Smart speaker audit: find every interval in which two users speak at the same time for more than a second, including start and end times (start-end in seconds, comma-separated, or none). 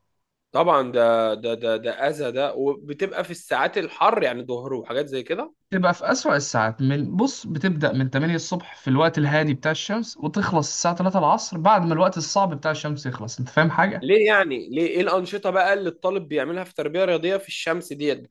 none